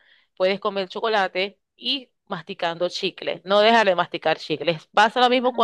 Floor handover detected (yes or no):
no